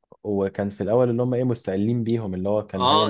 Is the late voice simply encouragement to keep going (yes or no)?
no